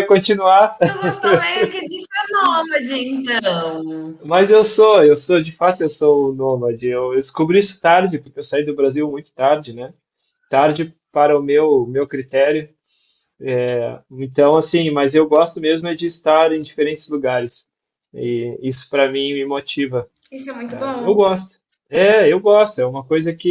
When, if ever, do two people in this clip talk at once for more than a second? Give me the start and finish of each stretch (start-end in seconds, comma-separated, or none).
none